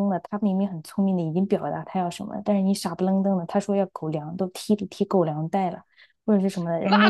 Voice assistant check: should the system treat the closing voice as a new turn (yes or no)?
yes